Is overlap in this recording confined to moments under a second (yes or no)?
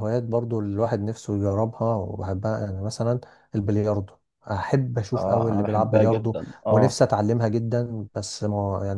no